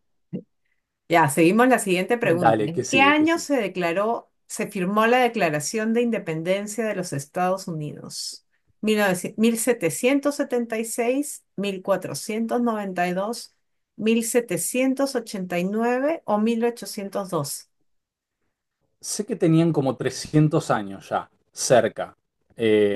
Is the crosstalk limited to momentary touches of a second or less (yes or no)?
no